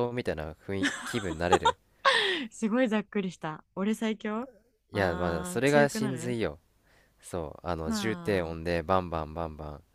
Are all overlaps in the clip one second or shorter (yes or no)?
no